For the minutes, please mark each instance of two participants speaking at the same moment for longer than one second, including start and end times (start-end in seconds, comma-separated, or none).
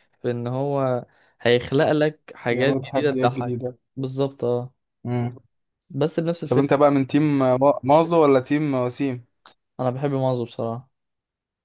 2.5-3.8